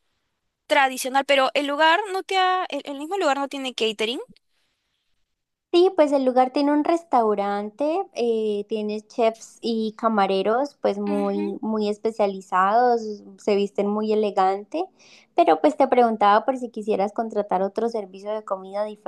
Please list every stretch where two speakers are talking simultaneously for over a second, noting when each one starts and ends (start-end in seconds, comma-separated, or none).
none